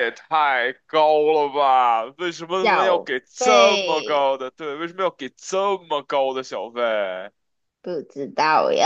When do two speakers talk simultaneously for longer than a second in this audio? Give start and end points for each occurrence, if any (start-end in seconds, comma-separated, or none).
2.6-4.3